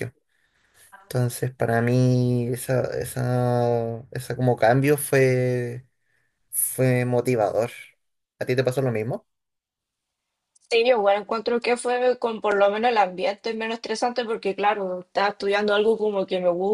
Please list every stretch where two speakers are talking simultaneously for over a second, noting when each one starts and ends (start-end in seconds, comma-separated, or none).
none